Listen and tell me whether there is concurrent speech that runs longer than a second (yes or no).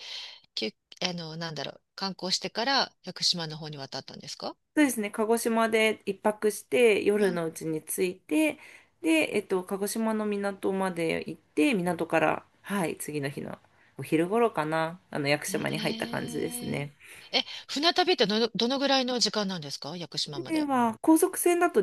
yes